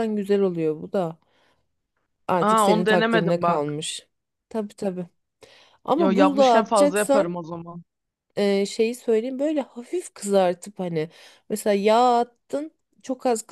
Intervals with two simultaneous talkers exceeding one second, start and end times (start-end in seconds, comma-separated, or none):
2.5-3.8, 6.0-7.4